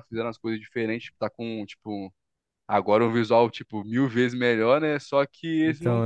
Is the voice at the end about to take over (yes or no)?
no